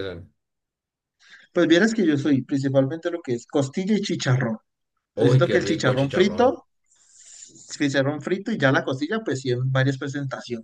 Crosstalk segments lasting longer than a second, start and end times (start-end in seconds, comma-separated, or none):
5.2-6.6